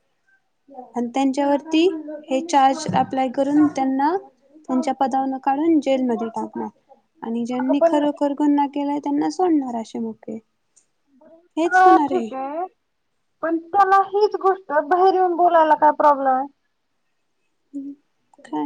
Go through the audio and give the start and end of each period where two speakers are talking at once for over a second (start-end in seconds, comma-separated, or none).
none